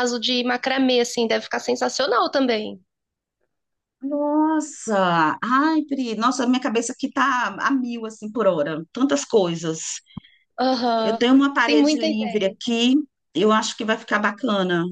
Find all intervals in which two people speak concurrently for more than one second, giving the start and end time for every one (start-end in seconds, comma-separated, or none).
11.0-12.6